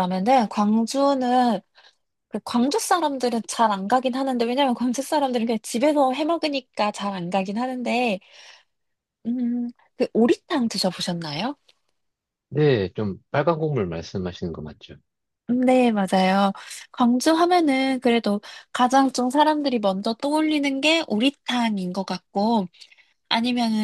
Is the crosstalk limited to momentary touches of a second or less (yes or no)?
yes